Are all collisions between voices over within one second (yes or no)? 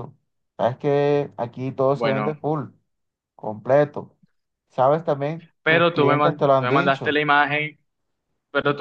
no